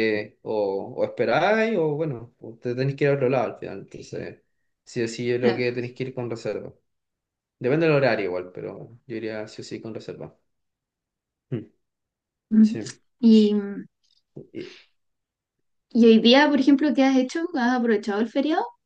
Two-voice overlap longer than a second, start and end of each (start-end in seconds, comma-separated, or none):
none